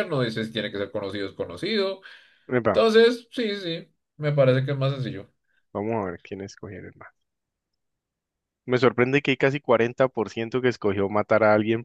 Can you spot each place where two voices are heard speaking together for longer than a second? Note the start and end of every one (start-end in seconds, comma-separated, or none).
none